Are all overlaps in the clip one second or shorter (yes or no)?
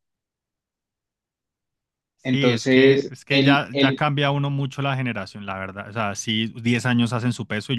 no